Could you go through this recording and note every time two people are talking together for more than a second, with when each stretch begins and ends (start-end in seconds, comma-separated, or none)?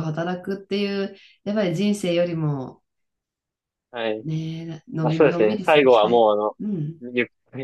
5.0-6.3